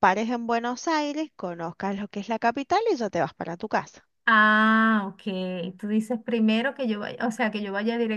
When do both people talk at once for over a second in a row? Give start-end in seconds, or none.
none